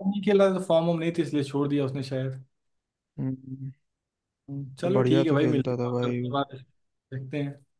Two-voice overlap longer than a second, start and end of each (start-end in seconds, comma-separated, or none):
4.8-6.3